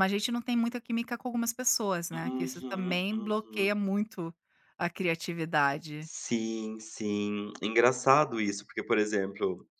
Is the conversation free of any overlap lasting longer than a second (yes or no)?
no